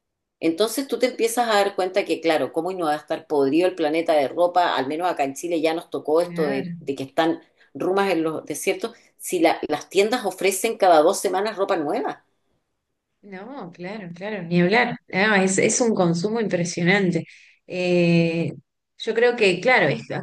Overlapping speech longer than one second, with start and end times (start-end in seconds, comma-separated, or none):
none